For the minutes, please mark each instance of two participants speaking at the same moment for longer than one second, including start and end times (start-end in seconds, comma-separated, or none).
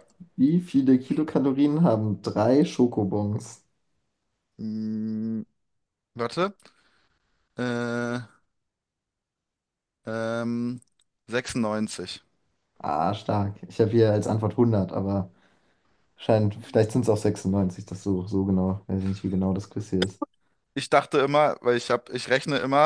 none